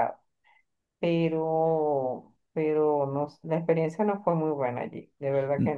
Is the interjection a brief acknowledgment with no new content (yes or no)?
no